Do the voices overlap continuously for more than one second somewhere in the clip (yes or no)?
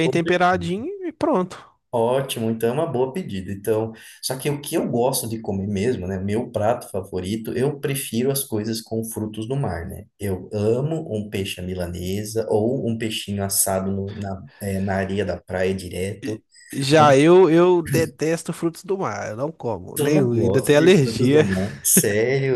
yes